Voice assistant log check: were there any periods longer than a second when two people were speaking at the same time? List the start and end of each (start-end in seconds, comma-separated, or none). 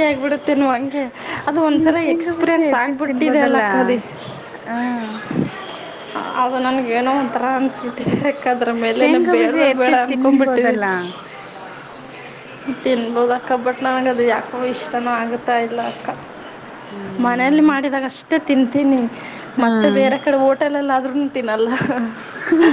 9.0-10.8